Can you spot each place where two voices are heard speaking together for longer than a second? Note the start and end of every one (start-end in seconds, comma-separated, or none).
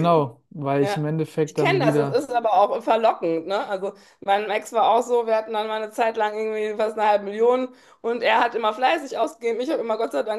0.8-2.2